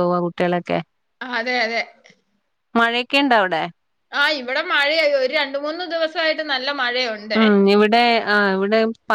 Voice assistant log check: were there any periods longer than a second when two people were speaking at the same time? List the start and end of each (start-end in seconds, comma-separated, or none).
none